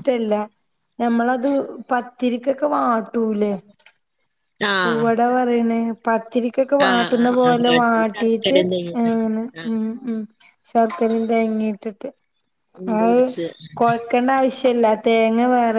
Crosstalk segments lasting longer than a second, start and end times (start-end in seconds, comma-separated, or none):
6.9-8.6